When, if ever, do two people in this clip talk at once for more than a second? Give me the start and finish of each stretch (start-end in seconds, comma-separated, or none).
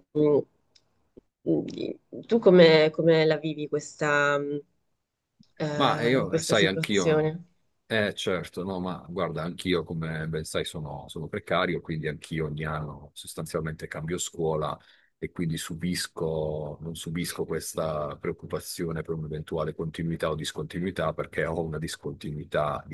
5.7-7.4